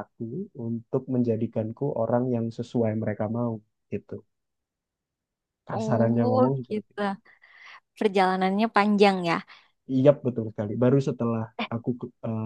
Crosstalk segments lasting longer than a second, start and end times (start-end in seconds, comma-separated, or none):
5.7-7.0